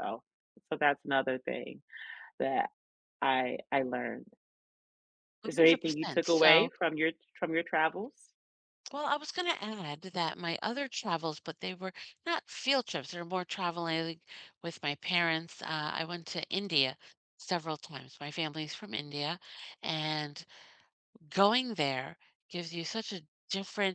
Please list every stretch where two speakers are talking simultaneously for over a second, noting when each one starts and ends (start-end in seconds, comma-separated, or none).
5.4-6.7